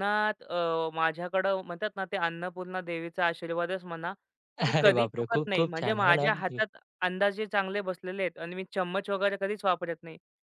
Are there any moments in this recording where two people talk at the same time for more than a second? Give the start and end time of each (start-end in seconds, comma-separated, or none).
4.8-6.6